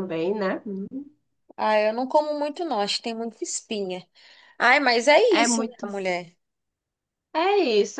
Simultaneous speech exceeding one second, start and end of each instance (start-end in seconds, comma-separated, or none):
none